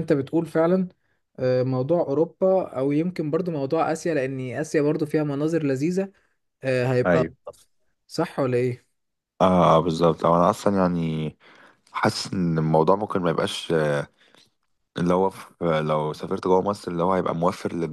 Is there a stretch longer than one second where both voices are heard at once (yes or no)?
no